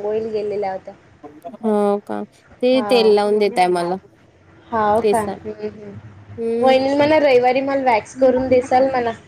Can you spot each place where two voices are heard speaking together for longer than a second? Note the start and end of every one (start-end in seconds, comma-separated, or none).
none